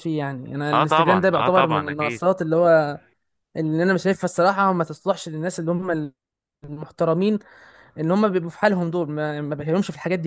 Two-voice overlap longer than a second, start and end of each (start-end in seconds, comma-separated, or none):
0.7-2.2